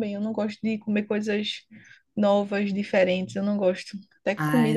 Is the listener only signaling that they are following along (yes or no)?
no